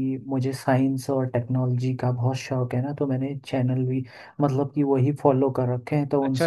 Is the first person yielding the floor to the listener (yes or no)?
yes